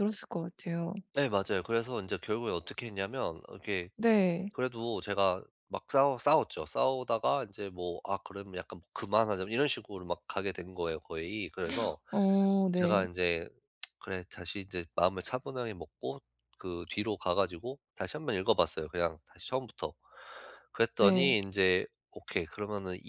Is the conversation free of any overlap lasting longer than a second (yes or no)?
yes